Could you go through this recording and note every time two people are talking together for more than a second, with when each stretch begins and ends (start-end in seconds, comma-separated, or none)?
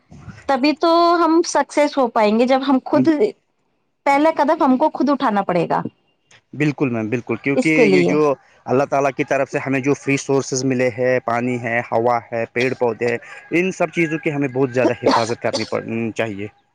none